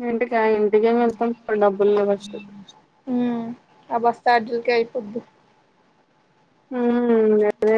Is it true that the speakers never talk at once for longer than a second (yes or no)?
yes